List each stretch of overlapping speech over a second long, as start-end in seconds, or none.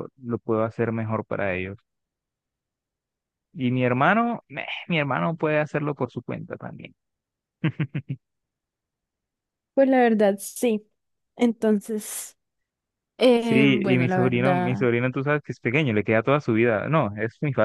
13.4-14.8